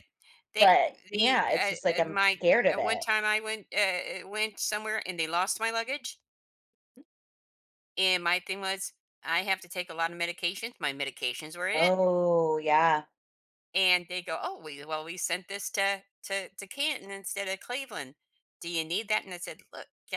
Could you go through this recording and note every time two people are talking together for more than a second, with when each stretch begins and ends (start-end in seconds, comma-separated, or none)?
0.6-3.0